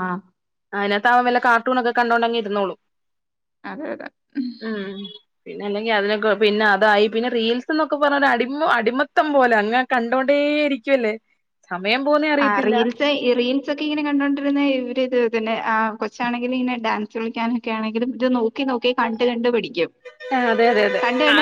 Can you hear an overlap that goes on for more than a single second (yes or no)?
no